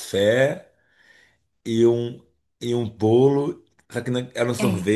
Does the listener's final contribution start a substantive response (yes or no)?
no